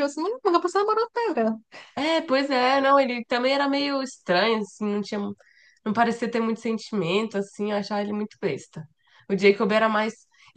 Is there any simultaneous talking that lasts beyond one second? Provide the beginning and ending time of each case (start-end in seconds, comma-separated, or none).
none